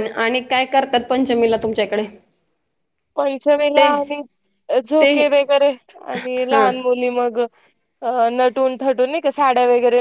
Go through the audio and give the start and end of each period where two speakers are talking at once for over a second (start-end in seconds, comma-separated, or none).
none